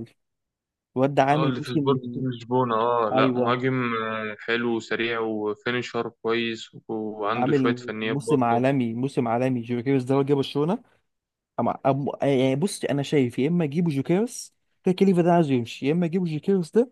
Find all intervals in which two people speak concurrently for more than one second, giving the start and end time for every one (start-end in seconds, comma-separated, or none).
7.3-8.6